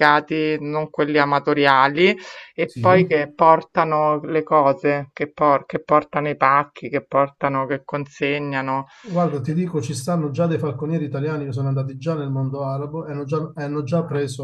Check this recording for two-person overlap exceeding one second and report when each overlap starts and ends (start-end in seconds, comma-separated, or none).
none